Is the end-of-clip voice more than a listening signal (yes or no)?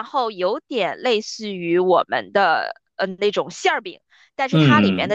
no